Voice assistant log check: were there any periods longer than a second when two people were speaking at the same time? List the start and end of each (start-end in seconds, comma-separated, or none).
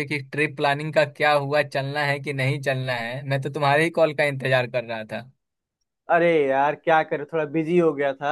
none